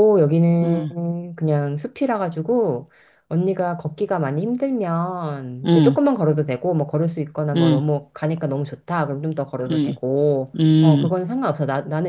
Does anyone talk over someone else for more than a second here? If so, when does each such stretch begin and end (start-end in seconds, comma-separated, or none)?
none